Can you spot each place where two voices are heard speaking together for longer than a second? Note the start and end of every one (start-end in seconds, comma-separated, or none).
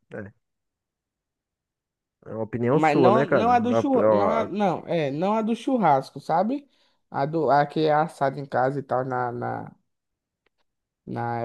2.7-4.5